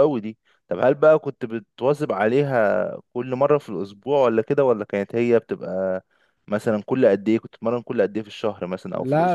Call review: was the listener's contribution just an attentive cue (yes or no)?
no